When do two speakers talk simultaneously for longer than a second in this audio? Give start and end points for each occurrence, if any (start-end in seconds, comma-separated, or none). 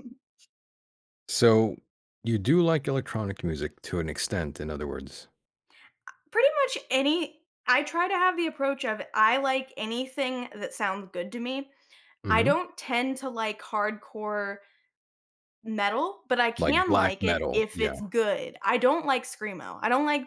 16.6-17.9